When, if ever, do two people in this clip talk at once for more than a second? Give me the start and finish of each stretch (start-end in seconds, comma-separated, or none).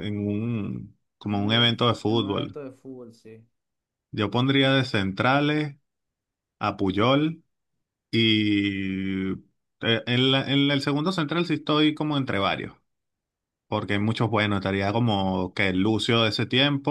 1.3-2.6